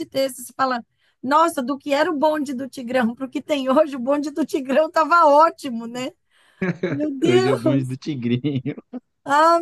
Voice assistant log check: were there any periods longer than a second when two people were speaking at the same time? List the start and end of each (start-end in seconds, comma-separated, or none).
none